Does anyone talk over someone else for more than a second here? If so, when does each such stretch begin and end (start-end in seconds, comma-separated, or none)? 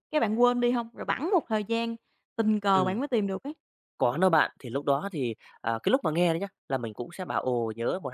none